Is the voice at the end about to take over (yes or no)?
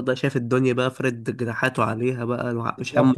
yes